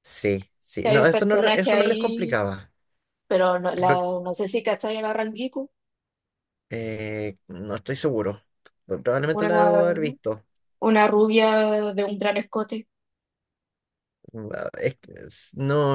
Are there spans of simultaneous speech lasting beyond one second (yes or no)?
yes